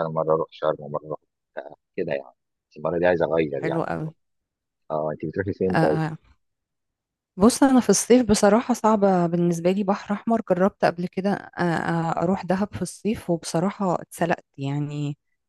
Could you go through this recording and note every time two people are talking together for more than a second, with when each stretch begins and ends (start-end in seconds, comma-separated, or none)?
none